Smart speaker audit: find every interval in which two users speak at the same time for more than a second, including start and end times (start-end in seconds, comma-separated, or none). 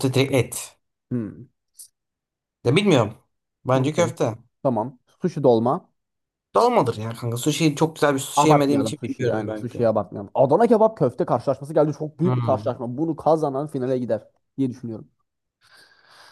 8.4-9.8